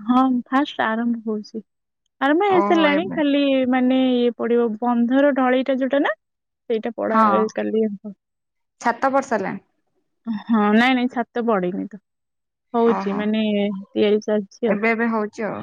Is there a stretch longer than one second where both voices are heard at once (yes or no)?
no